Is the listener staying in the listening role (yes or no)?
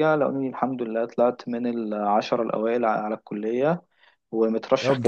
yes